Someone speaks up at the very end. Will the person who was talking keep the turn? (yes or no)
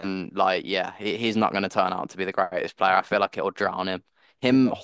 yes